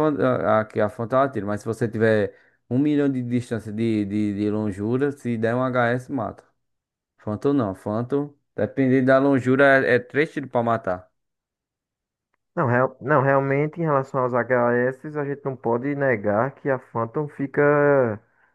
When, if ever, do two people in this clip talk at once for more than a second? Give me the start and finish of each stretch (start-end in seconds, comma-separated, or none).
none